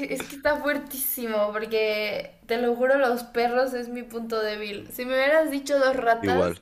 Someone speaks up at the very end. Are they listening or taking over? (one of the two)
listening